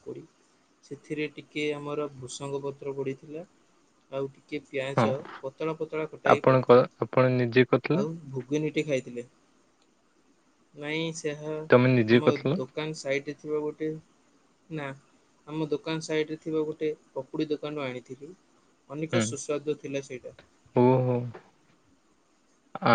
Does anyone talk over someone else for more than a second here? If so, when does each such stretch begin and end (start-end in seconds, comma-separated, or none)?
none